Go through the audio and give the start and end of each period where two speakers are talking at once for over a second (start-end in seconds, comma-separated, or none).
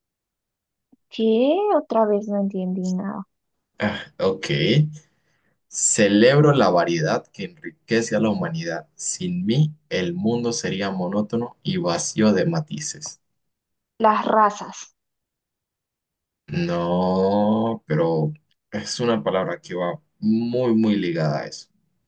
none